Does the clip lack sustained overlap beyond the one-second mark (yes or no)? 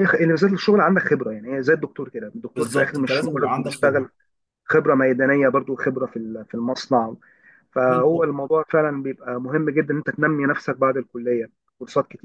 no